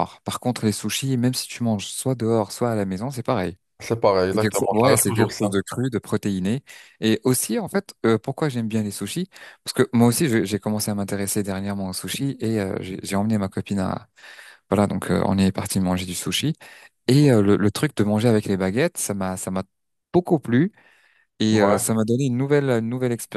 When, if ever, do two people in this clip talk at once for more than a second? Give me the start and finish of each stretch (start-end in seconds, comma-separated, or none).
4.3-5.5